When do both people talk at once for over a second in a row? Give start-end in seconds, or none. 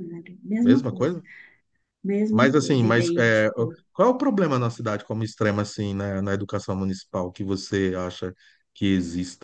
2.3-3.5